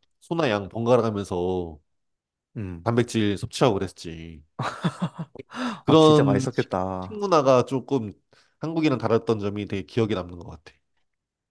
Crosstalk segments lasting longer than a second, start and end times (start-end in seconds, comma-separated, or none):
5.9-7.3